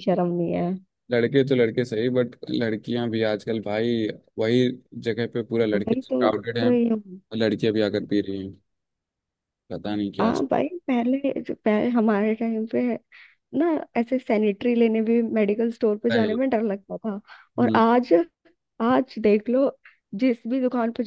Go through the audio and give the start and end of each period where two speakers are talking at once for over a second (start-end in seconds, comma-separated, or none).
5.7-7.2